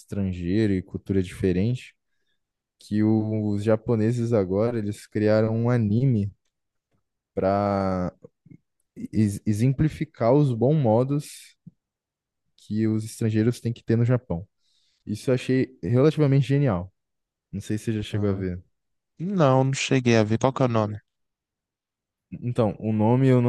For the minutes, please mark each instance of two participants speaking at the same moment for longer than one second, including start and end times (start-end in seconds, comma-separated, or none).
none